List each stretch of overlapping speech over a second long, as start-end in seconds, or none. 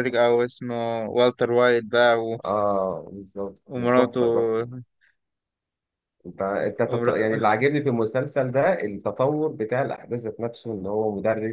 none